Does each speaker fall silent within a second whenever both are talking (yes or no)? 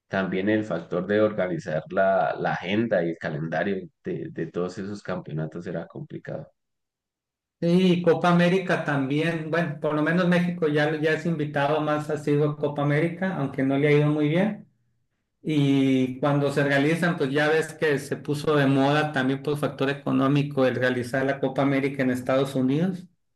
yes